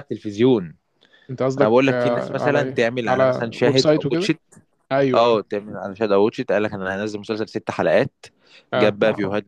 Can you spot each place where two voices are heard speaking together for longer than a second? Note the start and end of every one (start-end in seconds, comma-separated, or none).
1.6-4.3